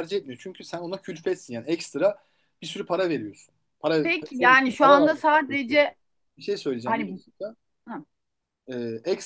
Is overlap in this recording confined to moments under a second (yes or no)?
no